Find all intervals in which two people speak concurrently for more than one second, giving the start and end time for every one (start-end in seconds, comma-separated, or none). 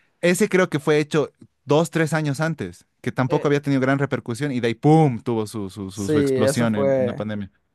5.9-7.2